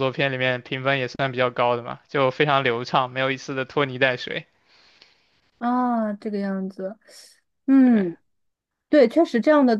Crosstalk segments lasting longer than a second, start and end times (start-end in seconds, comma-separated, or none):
none